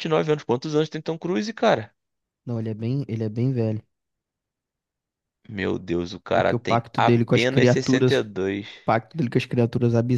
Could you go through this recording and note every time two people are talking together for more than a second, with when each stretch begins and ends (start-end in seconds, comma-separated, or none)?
6.3-8.2